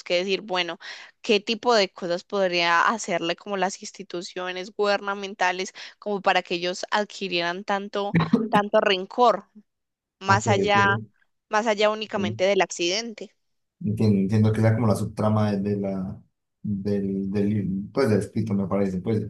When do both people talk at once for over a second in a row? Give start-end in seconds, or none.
none